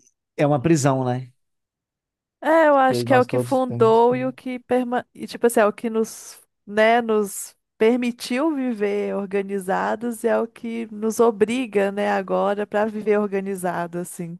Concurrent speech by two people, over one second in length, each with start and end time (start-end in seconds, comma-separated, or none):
2.9-4.2